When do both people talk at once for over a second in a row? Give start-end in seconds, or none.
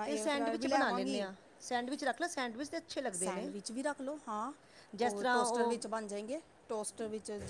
none